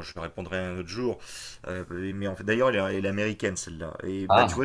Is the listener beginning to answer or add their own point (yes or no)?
no